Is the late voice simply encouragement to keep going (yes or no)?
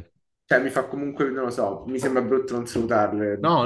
no